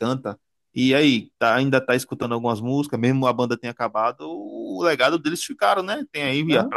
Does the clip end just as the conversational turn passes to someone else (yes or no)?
no